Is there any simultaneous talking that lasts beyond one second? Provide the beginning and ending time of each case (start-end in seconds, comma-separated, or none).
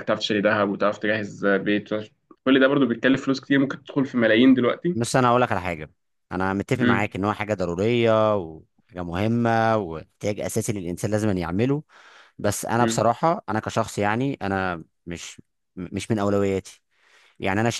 none